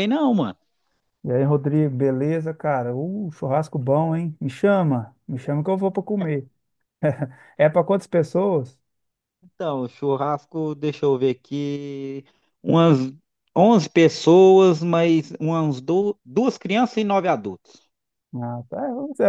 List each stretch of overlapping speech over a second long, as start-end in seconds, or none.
none